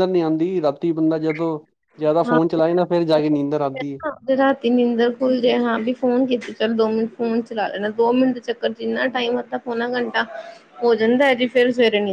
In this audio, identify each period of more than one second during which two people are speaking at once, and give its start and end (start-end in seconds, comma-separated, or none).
none